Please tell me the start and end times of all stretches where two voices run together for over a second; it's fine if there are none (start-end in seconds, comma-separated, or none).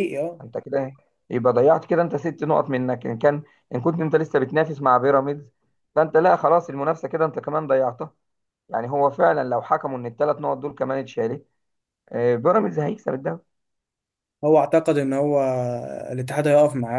none